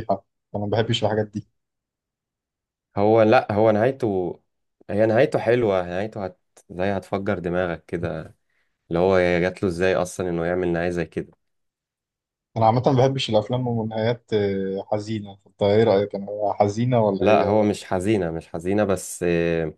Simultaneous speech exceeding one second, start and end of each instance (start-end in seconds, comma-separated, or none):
none